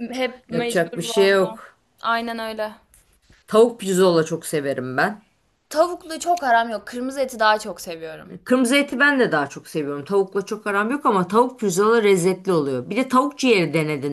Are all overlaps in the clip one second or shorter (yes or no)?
no